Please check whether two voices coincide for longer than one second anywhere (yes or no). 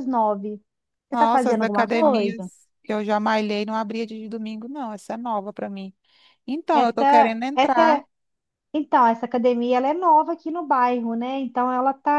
yes